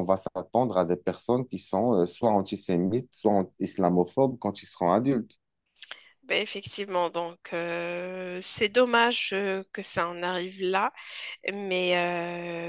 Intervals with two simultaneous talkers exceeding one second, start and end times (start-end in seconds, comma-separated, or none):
none